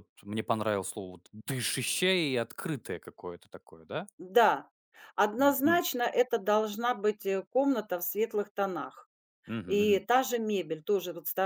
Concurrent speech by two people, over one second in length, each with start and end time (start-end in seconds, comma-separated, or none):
none